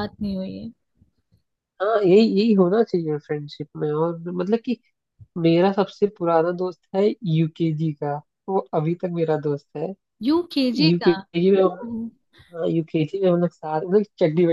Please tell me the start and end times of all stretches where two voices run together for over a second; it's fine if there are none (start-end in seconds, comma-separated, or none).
none